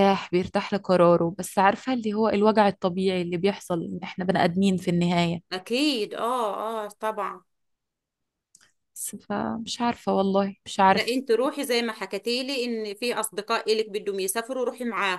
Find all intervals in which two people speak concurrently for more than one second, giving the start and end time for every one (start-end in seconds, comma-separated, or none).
none